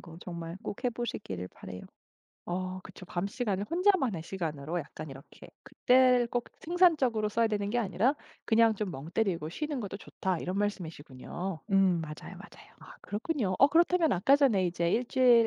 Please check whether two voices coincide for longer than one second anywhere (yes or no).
no